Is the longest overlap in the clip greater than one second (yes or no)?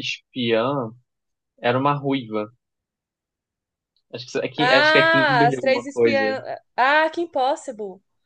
yes